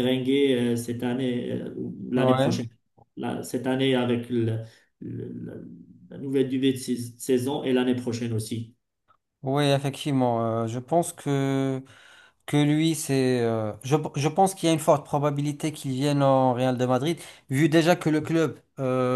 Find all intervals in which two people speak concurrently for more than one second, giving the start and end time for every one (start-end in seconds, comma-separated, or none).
none